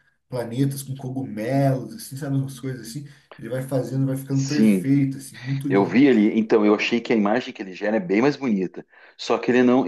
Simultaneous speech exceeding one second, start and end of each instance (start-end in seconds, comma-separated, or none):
none